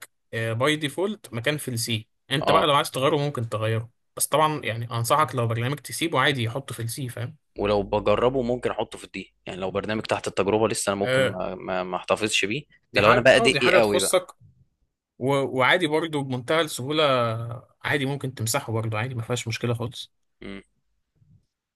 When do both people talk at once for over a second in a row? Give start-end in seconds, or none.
12.9-14.2